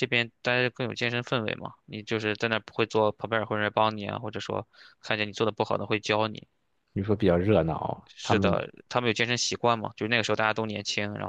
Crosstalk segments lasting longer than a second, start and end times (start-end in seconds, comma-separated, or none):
none